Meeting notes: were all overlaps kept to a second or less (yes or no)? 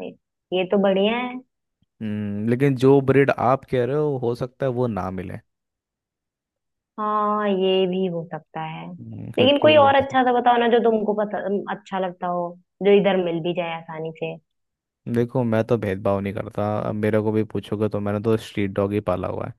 yes